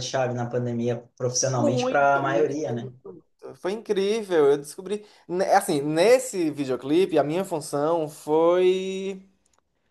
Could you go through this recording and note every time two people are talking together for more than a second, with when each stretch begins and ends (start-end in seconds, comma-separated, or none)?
1.5-2.9